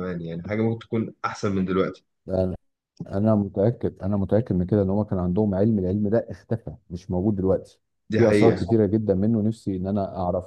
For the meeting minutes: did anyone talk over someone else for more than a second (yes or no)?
no